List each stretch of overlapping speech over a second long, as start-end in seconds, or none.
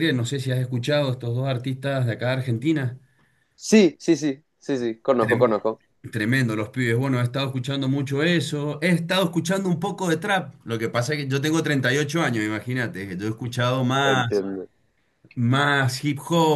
none